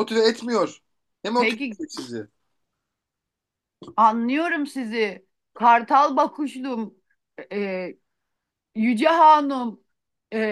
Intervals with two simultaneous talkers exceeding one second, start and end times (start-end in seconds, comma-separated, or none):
none